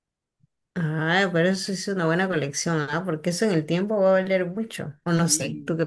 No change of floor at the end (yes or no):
no